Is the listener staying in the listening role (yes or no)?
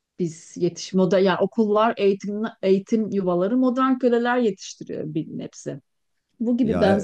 yes